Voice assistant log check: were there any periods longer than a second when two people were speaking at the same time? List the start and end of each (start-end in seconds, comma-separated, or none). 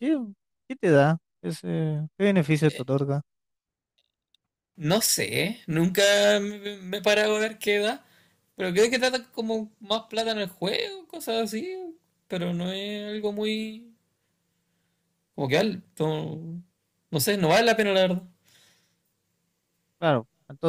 none